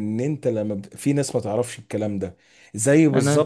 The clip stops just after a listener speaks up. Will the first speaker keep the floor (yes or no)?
yes